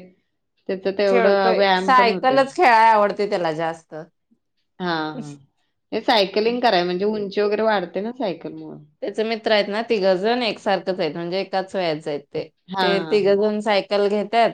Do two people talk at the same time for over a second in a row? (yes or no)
yes